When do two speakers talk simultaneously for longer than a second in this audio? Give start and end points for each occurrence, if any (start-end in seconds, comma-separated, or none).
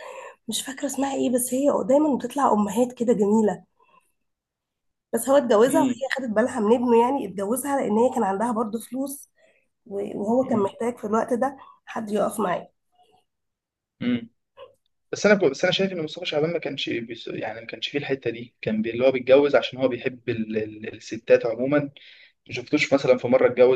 none